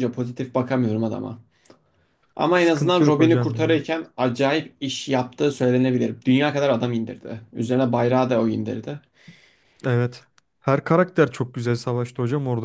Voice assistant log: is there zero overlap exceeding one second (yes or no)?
no